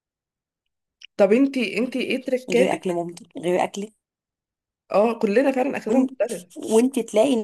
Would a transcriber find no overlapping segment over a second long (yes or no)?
yes